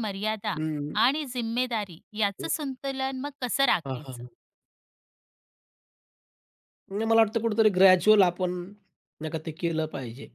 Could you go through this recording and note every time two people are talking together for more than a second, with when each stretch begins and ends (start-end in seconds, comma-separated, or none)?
none